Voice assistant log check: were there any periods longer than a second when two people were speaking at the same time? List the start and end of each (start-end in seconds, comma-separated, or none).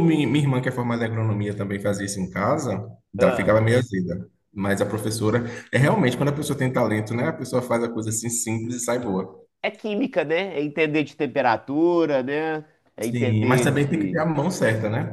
13.0-14.2